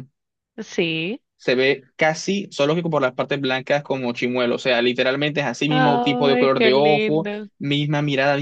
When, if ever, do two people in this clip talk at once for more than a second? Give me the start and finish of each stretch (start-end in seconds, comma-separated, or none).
5.7-7.5